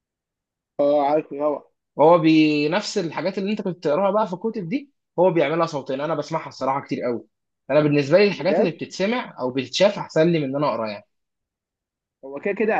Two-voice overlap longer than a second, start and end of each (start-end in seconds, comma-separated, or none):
none